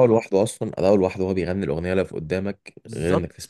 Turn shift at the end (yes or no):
yes